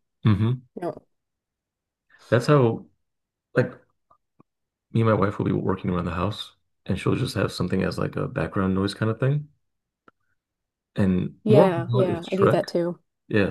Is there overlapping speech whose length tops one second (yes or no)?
yes